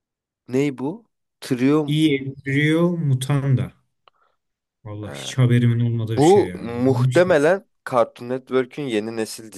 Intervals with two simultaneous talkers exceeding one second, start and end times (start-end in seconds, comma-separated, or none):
6.2-7.4